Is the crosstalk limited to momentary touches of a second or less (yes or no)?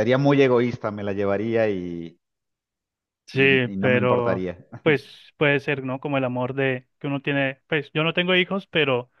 no